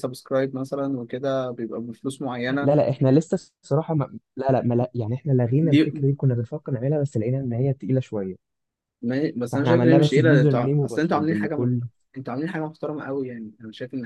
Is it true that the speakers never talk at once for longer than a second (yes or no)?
no